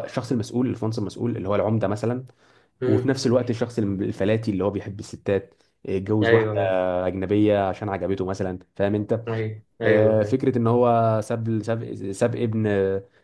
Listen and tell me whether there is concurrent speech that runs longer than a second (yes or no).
no